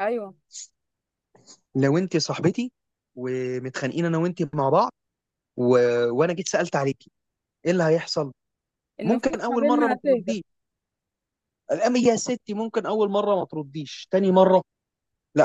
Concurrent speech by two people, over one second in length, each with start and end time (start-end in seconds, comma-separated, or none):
9.0-10.4